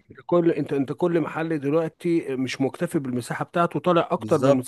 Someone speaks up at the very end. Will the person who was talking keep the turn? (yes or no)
no